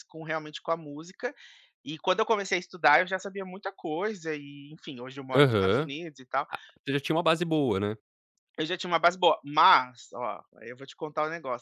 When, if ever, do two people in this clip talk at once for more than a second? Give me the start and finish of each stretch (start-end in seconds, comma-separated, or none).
none